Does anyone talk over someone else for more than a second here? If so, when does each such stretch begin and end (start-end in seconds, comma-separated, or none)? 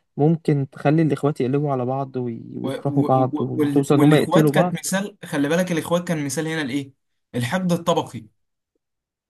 2.6-4.9